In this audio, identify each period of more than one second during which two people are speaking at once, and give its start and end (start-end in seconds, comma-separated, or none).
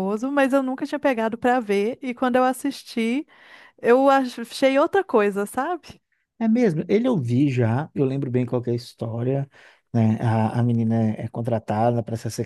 none